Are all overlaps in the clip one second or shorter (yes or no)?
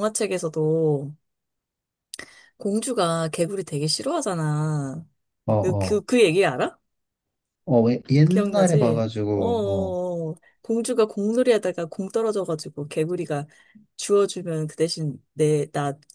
no